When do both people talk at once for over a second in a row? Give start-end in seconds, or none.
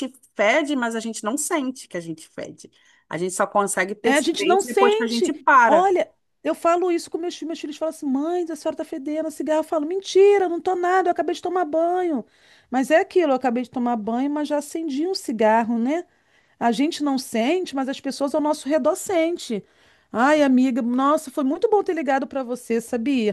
4.0-5.8